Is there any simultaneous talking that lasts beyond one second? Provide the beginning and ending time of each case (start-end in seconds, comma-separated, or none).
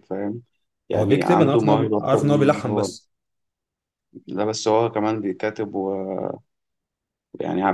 0.9-2.9